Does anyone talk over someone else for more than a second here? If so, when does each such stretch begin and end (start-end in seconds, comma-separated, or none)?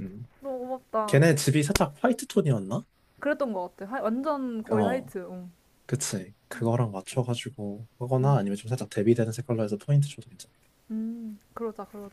none